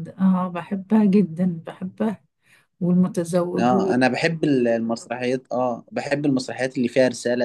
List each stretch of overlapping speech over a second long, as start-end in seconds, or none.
none